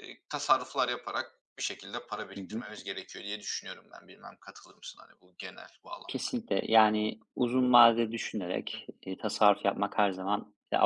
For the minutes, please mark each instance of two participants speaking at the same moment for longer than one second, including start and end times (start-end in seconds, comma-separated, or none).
none